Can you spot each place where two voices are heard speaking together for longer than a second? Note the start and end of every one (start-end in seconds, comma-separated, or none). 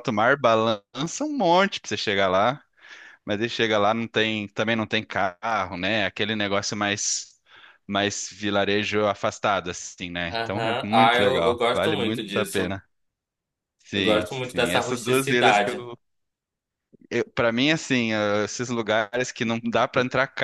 10.3-12.8, 13.9-15.8